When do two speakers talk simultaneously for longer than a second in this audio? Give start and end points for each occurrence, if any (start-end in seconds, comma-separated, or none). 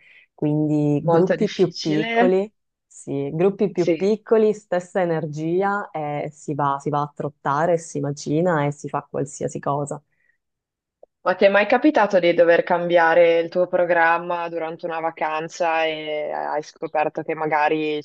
1.0-2.4